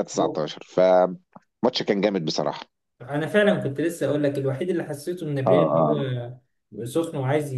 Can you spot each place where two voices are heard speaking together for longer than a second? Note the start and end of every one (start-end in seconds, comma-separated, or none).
none